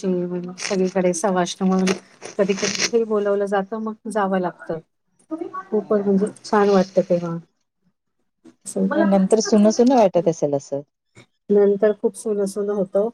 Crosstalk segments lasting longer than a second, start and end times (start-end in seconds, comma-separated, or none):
none